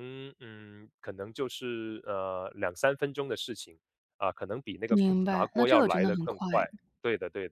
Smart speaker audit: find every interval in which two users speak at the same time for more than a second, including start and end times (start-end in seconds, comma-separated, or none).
4.9-6.5